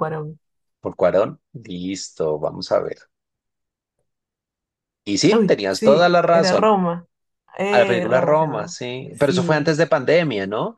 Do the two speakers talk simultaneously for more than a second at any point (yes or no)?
yes